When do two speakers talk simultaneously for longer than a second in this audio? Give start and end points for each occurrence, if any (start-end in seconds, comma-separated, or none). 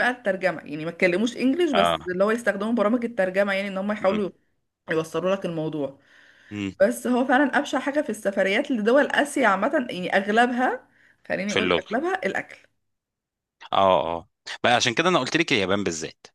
none